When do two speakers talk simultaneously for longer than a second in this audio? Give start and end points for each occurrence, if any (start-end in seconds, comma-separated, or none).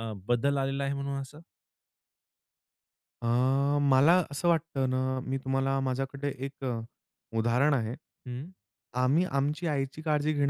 none